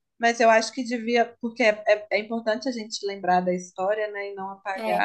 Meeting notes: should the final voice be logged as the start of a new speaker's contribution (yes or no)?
no